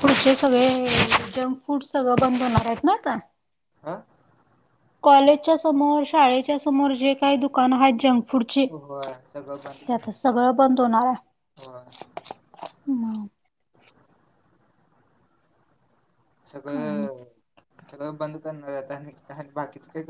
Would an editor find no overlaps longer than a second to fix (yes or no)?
no